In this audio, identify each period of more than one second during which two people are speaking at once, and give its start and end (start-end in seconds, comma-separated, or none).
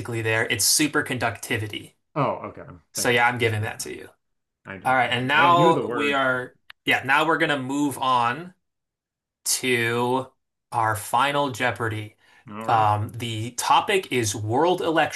4.8-6.2